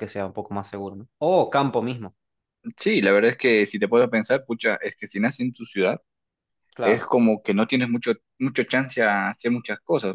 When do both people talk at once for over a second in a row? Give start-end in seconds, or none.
none